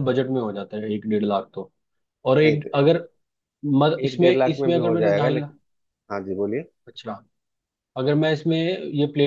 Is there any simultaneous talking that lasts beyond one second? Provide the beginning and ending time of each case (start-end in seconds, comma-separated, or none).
4.1-5.5